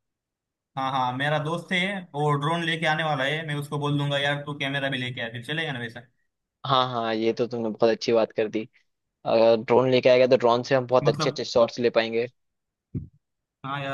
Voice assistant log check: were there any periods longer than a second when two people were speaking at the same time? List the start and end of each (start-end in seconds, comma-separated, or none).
none